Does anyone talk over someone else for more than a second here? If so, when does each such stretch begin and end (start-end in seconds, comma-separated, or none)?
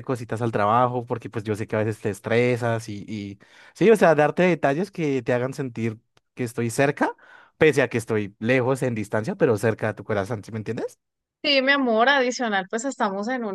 none